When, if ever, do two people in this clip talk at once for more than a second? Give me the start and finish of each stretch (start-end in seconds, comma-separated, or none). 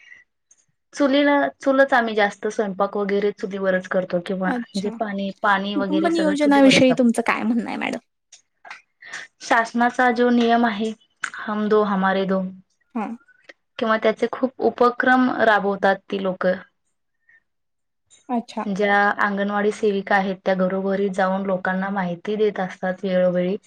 5.8-8.0